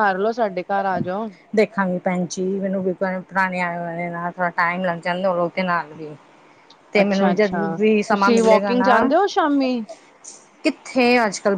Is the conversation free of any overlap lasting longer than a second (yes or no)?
no